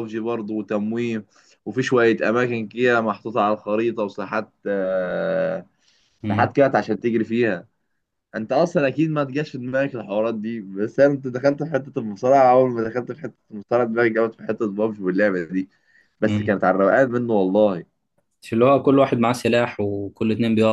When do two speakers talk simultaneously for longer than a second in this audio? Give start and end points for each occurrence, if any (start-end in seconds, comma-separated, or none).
none